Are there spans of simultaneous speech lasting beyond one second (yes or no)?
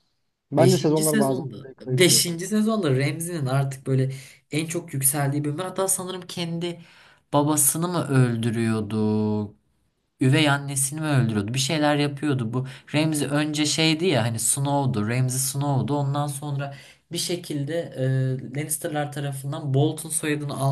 yes